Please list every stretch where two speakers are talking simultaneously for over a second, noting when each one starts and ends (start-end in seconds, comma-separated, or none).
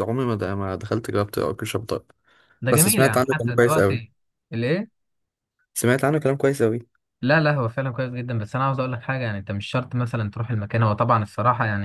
2.7-4.0